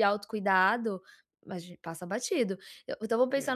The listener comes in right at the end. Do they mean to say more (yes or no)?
no